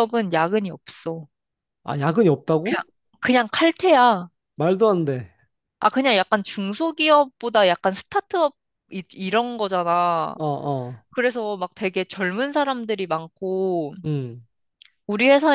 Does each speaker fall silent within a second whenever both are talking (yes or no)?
yes